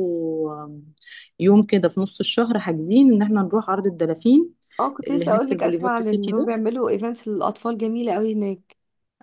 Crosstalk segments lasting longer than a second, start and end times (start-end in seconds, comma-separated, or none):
5.1-6.5